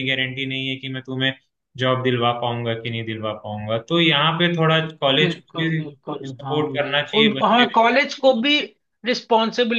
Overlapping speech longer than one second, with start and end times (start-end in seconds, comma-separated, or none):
5.2-7.8